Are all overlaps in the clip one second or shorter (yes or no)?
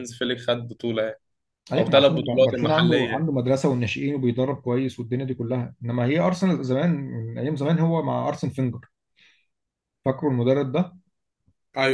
no